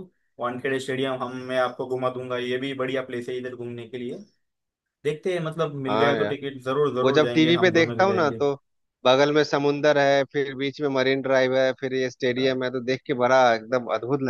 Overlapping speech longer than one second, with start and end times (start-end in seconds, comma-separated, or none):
7.0-8.4